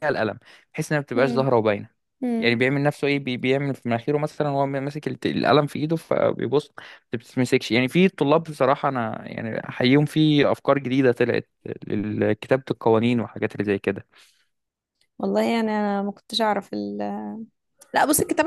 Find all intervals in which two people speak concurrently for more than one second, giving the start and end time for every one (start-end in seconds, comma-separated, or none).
none